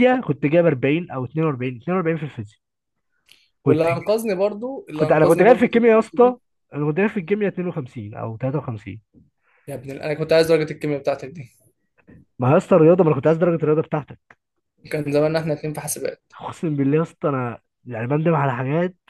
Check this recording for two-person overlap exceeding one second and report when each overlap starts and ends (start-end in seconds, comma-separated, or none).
5.0-6.4